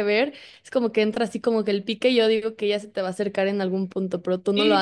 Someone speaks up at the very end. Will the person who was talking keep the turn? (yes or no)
no